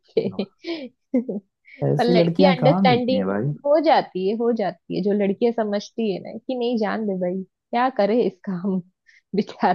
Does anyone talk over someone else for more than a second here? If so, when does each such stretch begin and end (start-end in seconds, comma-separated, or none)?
2.0-3.2